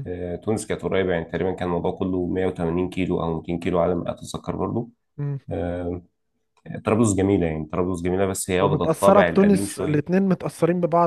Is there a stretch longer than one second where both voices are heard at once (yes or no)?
yes